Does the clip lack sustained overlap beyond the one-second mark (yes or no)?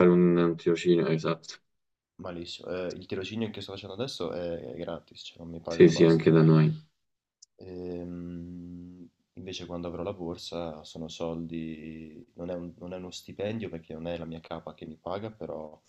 yes